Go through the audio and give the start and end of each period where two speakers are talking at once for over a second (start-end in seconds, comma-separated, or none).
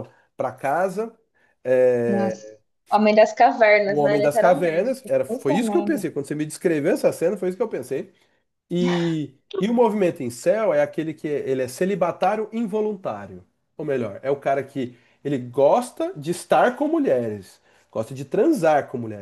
3.9-6.0